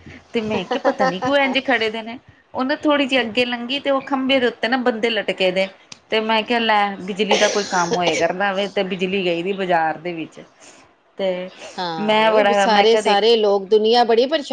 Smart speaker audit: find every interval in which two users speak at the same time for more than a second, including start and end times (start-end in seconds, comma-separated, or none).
12.0-13.2